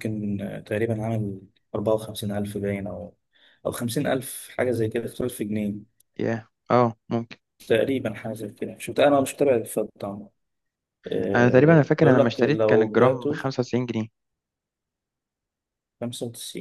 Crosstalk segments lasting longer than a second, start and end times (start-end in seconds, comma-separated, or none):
11.3-13.5